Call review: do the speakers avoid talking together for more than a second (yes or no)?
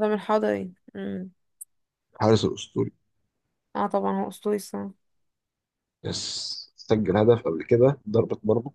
yes